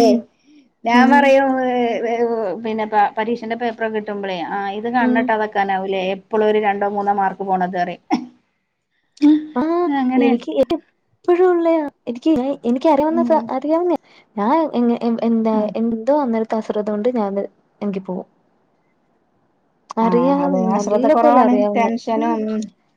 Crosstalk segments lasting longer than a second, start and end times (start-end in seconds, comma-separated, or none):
20.1-22.3